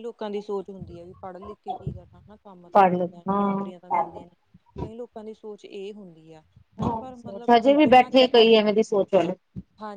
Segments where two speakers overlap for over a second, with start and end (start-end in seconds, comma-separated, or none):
2.7-4.2, 7.2-8.5